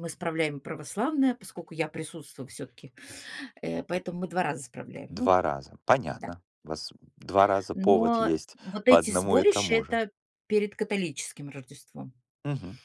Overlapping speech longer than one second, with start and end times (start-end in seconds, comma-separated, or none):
7.7-10.0